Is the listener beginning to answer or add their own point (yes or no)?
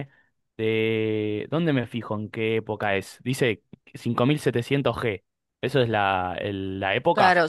yes